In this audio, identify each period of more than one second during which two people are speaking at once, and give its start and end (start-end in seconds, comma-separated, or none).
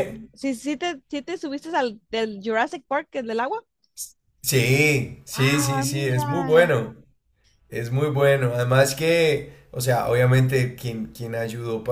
5.4-6.7